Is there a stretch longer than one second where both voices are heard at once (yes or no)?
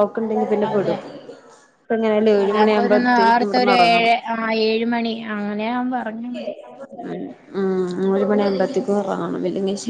yes